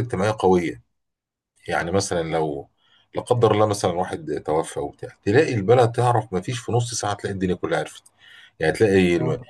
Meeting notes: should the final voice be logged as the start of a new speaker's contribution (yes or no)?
no